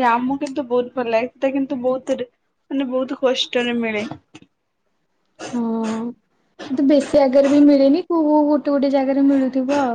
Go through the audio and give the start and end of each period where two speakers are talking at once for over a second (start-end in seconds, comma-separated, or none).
none